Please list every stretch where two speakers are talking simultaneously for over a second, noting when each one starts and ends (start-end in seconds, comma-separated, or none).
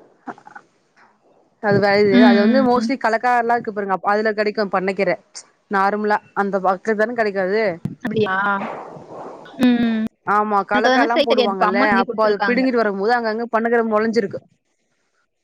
10.7-12.6